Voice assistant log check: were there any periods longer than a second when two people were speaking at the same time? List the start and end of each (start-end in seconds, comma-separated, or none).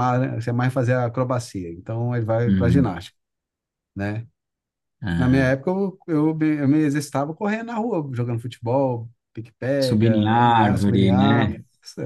9.8-11.5